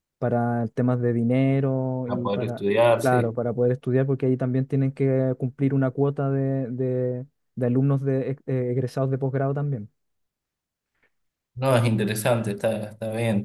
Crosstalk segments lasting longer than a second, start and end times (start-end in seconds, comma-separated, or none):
2.0-3.4